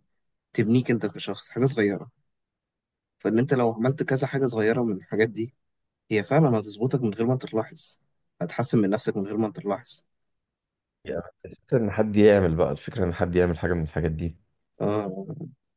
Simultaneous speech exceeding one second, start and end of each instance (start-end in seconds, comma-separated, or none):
none